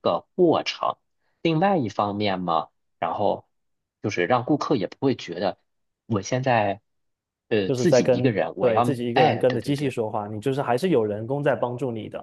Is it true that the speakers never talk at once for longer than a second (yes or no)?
no